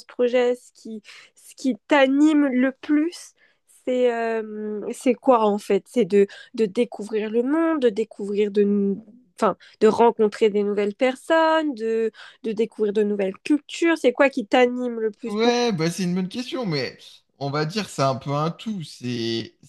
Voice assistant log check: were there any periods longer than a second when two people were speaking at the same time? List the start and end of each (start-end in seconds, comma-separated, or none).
none